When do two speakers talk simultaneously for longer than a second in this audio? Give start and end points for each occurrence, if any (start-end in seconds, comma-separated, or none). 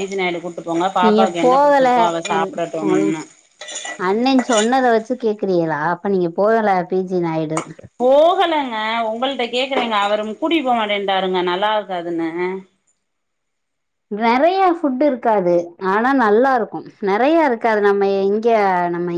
none